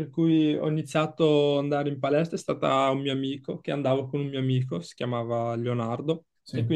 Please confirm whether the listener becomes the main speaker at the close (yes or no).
no